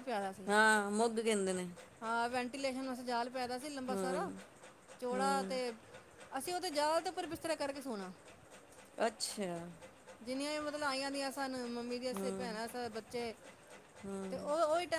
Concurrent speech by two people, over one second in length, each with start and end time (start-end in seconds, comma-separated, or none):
none